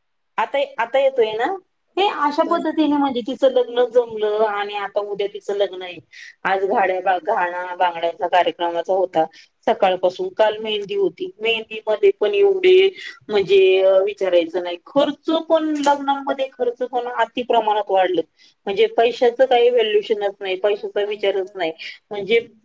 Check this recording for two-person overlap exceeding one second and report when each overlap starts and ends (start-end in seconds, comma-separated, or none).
19.2-21.7